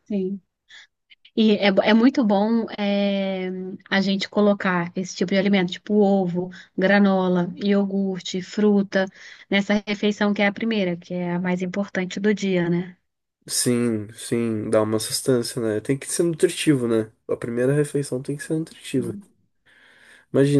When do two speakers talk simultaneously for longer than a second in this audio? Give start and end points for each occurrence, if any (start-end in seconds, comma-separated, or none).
none